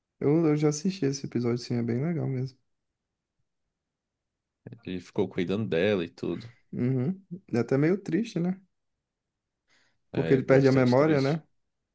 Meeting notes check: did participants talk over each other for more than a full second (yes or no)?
yes